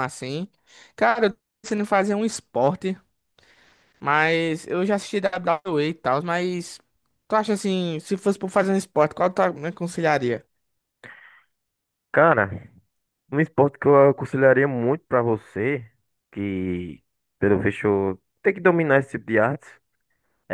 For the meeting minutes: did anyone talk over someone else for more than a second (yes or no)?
no